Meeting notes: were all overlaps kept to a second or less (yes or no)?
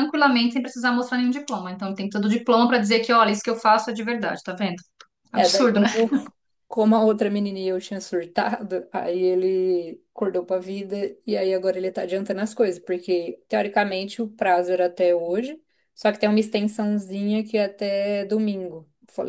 yes